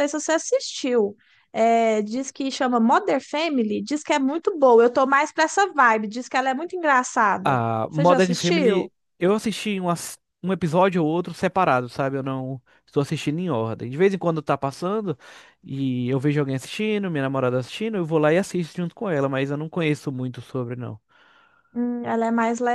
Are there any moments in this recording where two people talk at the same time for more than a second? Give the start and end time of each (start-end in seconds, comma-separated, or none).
7.4-8.9